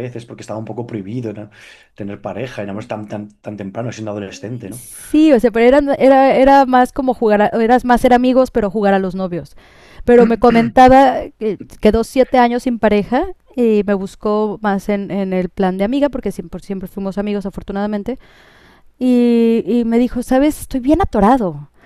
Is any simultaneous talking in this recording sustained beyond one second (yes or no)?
no